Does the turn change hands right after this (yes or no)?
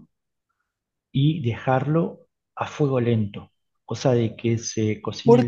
yes